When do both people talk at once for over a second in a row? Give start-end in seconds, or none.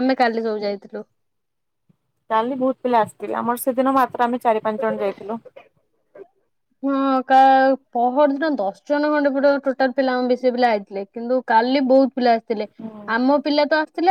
none